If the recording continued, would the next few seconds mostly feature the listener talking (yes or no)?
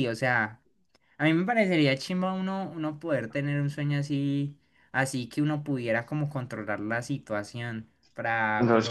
yes